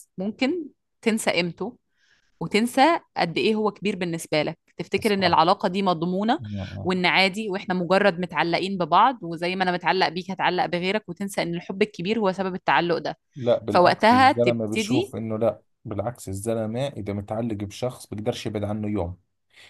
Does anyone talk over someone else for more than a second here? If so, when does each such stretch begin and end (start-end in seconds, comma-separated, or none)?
13.7-15.1